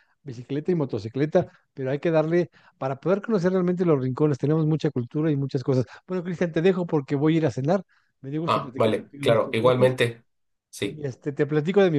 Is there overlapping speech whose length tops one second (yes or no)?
yes